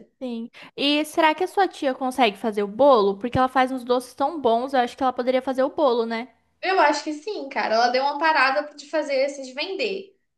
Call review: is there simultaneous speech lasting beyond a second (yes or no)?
no